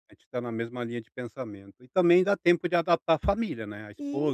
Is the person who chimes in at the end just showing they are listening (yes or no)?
yes